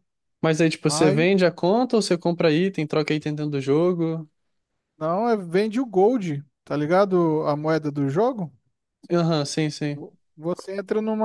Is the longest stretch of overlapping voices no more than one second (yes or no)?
yes